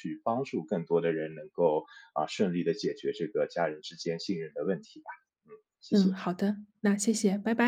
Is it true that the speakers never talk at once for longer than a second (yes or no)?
yes